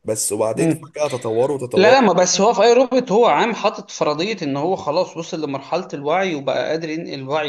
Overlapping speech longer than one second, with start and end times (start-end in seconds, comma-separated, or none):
none